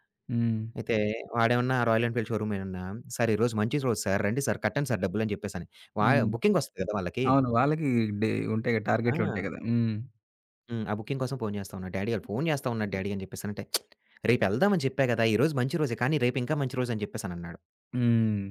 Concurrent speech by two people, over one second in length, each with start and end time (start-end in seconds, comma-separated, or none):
none